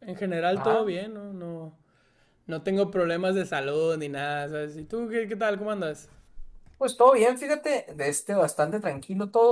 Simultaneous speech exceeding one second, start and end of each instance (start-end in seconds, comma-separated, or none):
none